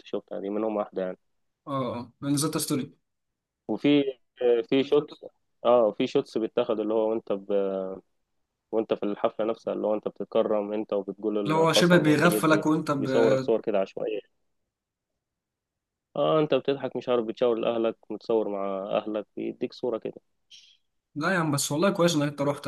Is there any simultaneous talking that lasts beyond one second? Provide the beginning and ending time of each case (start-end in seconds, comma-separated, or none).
11.4-13.1